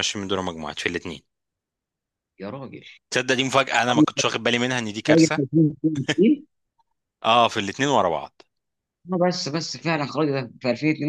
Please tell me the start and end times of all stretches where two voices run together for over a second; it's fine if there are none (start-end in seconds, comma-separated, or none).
none